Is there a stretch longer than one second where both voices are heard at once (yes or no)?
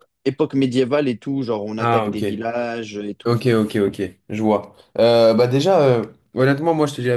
no